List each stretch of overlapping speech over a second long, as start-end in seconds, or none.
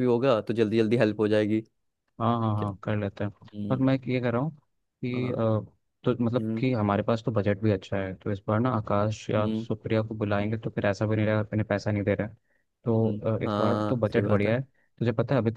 12.9-14.5